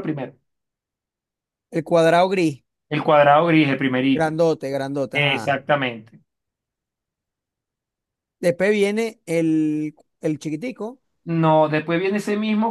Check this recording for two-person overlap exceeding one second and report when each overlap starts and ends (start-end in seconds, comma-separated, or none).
none